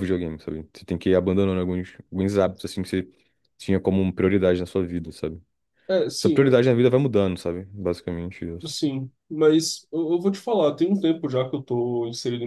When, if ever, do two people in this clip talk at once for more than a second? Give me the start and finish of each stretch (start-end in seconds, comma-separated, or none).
none